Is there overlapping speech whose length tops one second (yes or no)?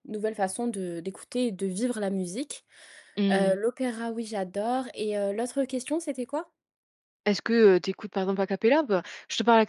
no